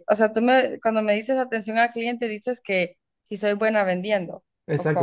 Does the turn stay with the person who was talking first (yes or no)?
no